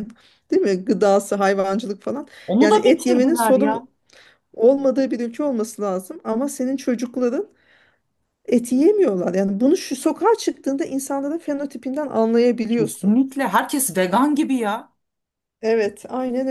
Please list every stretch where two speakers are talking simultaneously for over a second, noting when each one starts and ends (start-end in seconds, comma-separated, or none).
2.5-3.8